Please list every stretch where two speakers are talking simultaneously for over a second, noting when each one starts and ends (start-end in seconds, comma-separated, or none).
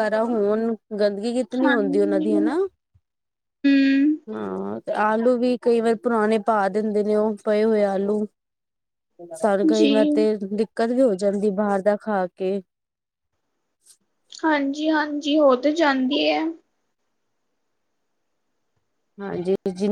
none